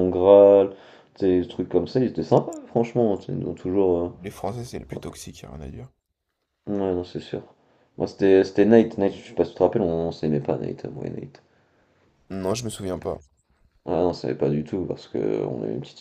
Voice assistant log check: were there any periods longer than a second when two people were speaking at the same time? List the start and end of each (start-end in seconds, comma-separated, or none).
none